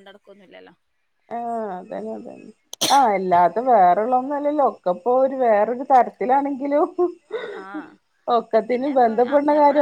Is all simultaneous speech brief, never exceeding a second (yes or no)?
no